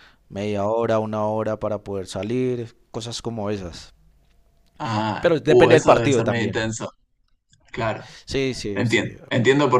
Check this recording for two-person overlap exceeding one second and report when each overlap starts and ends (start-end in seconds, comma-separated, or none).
5.2-6.6